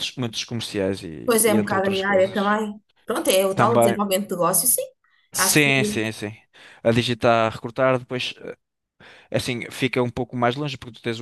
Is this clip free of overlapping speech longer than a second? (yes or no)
no